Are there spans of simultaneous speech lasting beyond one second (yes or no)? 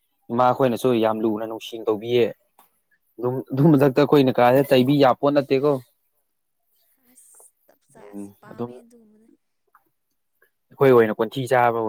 no